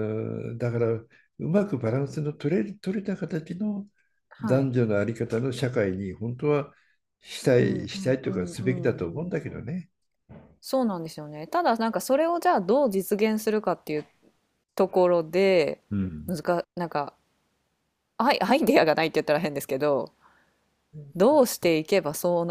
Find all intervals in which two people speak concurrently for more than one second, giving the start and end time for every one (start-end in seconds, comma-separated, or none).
7.6-9.4